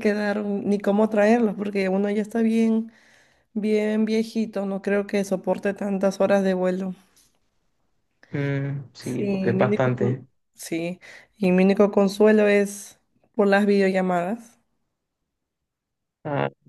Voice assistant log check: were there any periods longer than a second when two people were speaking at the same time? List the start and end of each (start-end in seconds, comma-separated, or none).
9.0-10.3